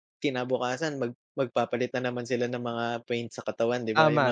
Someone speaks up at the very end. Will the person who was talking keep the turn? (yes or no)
no